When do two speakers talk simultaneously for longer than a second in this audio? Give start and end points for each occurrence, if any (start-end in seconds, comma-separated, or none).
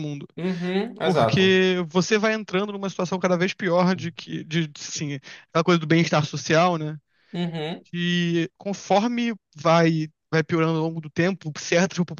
none